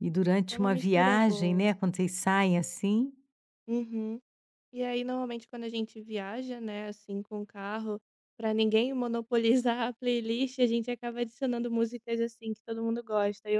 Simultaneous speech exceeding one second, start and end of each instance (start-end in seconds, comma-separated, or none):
0.5-1.8